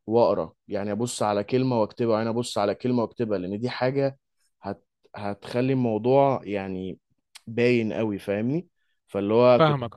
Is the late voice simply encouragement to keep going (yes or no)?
yes